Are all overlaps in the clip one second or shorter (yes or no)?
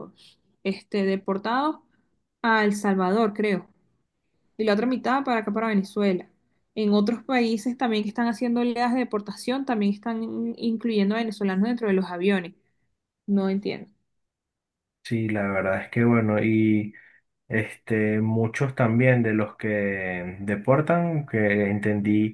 yes